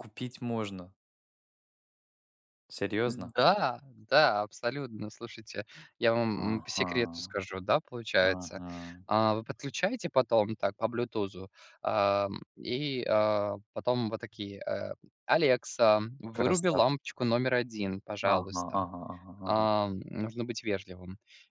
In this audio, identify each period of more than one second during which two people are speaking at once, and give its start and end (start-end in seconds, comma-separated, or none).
none